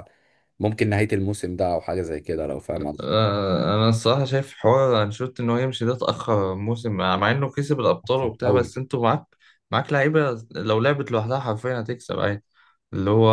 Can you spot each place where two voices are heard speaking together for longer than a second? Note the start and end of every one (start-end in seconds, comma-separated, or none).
none